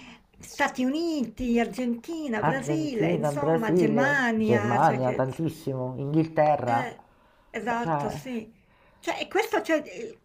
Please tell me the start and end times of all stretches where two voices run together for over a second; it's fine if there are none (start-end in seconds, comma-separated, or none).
2.4-5.2